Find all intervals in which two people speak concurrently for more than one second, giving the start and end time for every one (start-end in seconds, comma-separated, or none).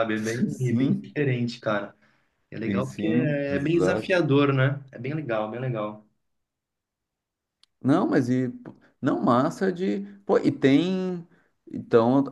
2.6-4.2